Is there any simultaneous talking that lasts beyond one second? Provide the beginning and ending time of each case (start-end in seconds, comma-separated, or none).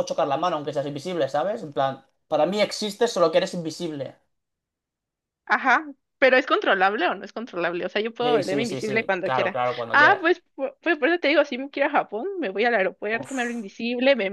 8.2-10.2